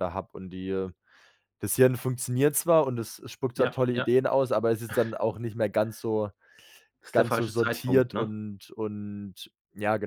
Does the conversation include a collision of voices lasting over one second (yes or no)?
yes